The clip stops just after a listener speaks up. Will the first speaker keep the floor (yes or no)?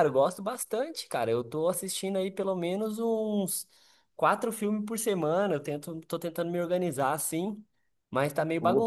yes